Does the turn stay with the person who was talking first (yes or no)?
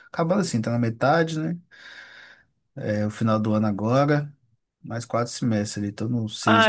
no